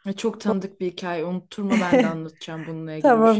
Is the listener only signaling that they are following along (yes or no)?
no